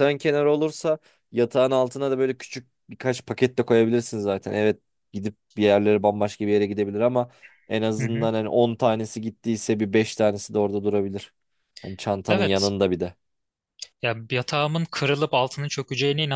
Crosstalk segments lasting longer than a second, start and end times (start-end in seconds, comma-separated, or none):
none